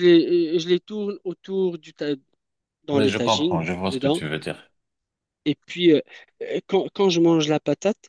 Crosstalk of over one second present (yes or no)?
yes